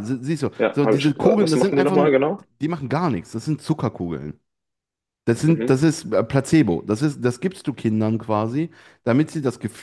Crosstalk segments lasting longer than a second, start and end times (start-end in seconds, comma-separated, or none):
0.6-2.1